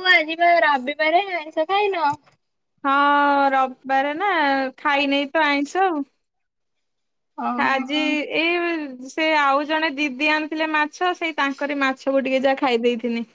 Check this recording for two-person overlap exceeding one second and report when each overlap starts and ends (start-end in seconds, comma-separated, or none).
none